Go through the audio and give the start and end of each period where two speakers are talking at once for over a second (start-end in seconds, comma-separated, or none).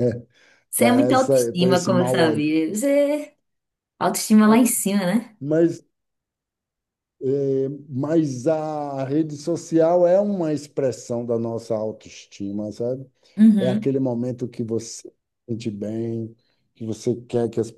0.8-2.4